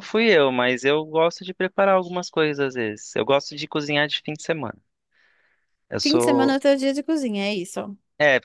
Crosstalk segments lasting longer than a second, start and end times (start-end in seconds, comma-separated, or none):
none